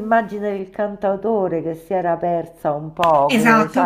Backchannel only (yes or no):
no